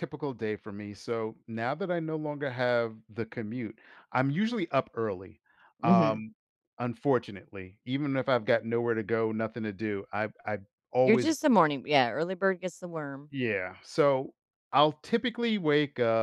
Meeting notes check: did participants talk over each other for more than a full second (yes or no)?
no